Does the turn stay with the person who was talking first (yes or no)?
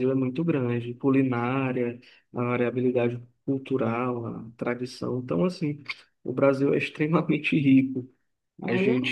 yes